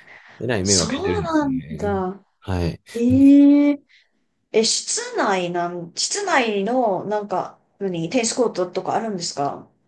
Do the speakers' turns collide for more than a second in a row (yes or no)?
yes